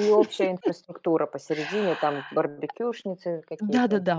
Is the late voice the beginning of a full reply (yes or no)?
yes